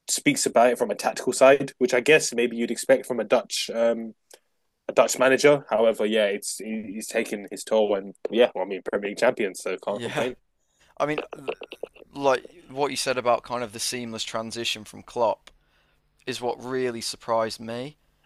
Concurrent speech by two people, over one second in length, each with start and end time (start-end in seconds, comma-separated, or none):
none